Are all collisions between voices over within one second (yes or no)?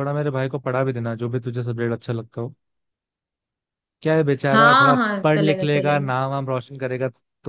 no